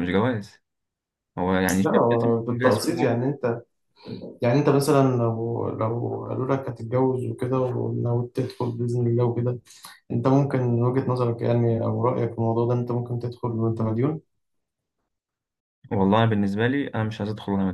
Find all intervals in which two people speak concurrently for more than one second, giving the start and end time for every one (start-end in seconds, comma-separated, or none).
1.8-3.2